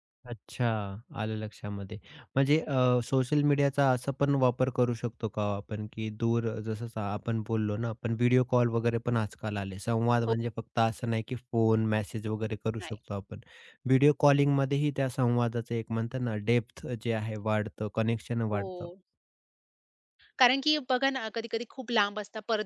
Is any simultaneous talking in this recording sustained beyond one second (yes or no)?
no